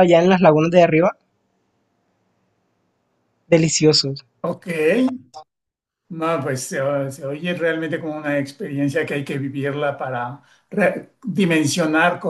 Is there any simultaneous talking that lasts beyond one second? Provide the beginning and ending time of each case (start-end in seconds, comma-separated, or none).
none